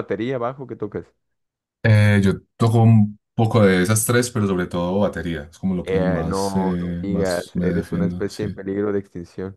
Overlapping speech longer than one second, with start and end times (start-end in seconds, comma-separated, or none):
5.8-8.6